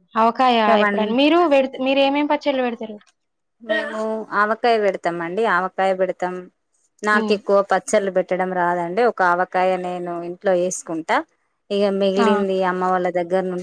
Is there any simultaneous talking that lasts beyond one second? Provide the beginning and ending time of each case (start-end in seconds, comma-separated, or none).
none